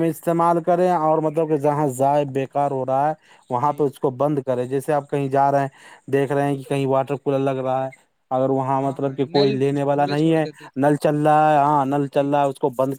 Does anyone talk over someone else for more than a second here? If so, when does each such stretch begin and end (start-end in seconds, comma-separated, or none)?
8.8-10.4